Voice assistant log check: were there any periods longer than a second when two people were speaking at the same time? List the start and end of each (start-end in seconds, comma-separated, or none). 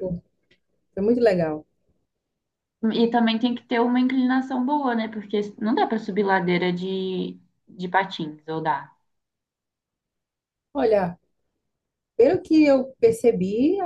none